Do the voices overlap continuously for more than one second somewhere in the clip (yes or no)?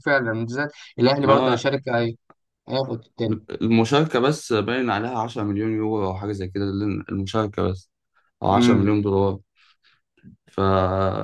no